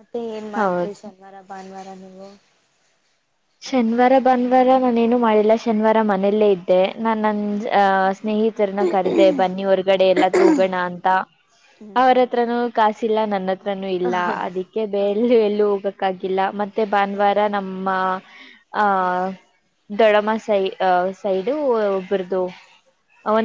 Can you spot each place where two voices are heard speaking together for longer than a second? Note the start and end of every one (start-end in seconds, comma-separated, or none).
none